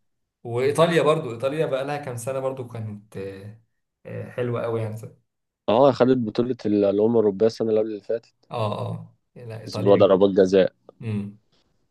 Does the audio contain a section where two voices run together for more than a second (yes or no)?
no